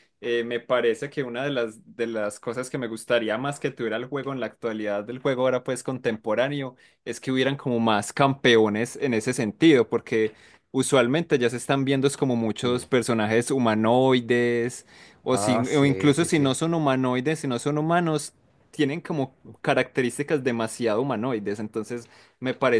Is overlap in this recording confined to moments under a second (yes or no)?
no